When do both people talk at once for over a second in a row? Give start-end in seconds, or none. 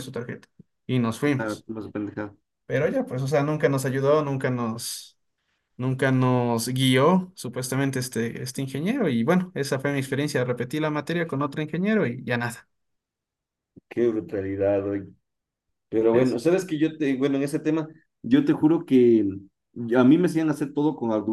none